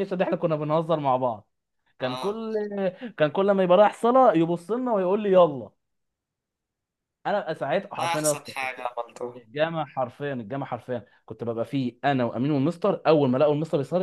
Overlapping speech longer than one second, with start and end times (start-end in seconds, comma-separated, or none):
none